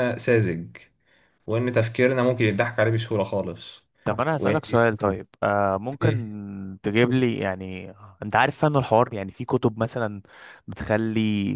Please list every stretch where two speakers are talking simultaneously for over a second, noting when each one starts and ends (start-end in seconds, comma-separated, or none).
none